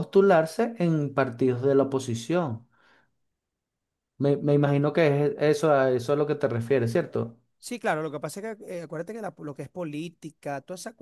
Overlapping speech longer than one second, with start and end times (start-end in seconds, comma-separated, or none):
none